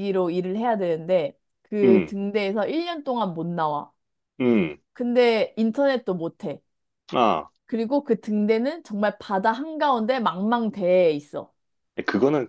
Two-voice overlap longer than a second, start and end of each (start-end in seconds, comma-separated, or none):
none